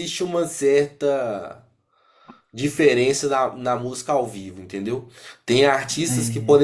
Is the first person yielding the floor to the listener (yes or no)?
no